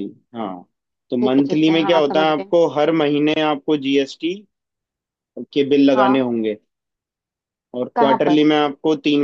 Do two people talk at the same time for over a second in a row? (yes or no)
yes